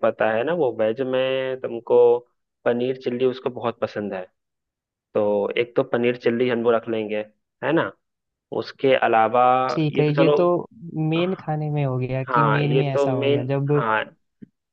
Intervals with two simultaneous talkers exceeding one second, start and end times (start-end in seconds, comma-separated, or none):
12.3-13.8